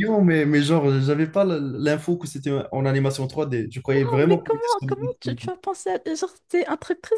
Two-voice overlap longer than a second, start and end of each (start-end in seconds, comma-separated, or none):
3.9-5.5